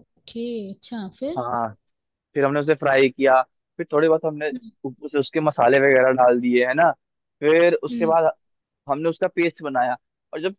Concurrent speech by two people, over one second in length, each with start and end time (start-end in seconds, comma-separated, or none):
none